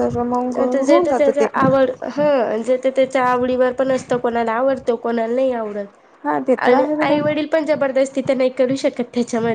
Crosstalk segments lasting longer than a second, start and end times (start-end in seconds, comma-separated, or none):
none